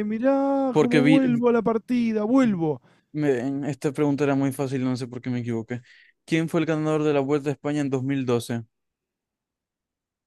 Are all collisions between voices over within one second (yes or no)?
yes